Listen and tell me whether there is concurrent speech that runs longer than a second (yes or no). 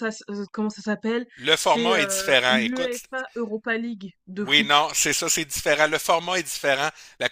yes